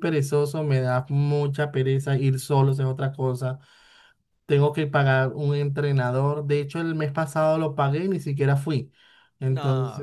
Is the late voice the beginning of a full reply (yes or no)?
no